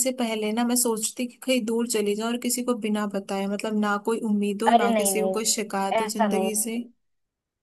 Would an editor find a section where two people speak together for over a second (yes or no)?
yes